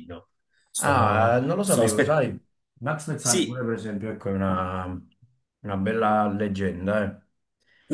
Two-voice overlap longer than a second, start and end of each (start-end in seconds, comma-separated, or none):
0.8-2.2